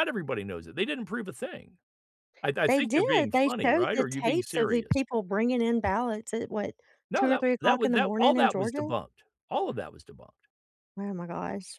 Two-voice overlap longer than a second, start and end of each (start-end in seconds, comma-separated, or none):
2.7-5.0, 7.2-8.9